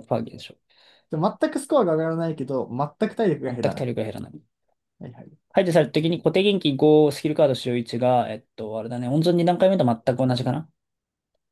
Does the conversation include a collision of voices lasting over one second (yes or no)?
no